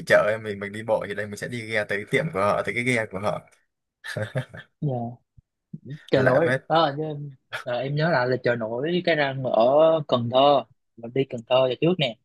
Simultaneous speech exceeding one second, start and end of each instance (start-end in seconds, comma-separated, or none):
none